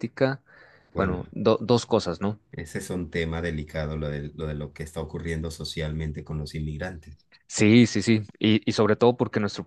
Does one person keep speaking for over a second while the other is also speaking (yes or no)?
no